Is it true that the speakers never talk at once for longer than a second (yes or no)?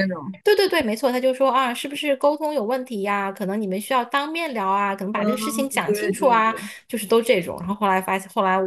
no